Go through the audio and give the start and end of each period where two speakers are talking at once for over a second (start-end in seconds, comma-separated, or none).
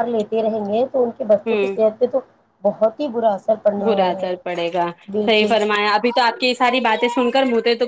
none